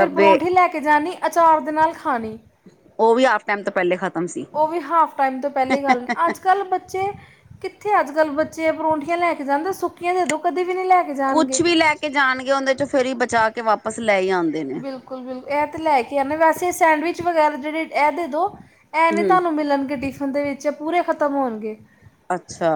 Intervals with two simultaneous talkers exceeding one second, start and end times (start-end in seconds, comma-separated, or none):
none